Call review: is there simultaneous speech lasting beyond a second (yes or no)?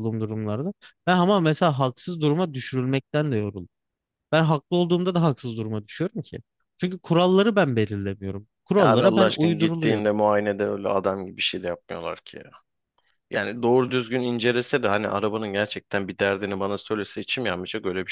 yes